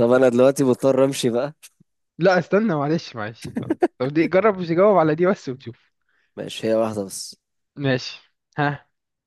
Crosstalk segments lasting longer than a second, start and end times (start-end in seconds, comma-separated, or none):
none